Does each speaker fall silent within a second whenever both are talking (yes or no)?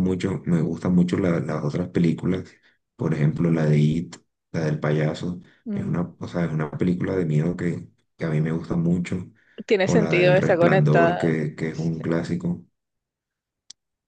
no